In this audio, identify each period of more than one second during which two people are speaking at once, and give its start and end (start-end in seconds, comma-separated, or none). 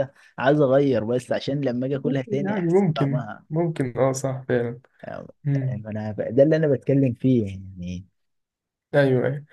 2.0-3.4